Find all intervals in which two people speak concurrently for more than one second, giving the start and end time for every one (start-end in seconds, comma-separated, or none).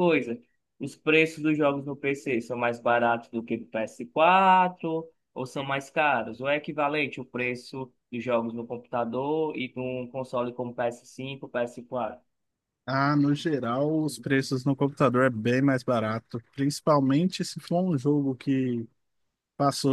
none